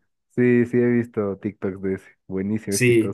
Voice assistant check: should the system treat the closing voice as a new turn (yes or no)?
yes